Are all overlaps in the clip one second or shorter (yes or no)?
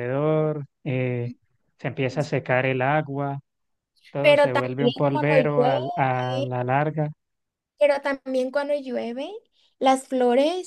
no